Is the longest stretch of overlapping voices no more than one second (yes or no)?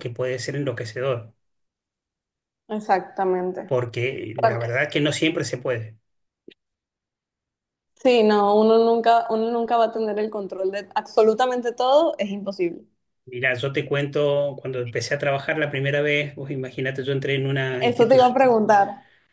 yes